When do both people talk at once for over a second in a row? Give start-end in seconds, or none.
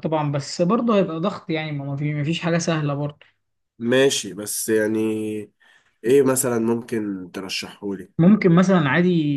none